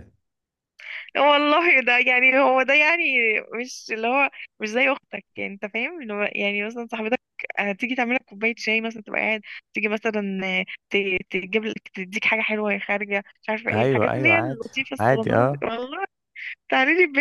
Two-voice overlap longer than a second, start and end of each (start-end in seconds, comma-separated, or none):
13.7-15.7